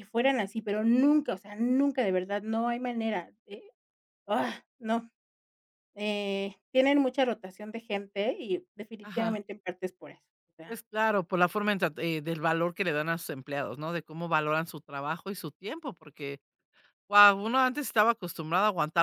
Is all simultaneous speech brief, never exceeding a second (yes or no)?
yes